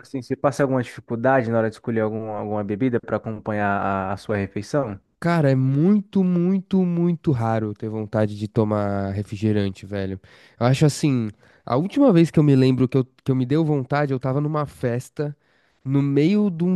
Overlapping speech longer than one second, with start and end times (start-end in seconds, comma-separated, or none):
none